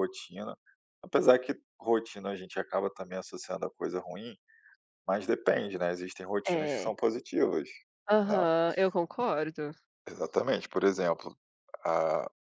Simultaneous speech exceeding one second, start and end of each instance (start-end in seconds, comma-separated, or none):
none